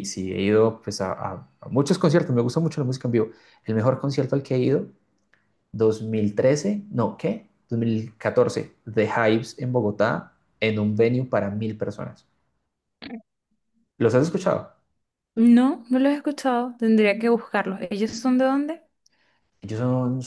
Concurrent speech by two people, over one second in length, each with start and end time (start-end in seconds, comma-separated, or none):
none